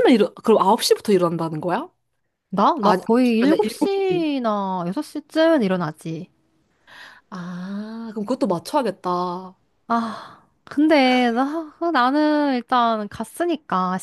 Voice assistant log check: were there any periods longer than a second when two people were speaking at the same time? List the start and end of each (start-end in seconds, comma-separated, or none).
2.8-4.3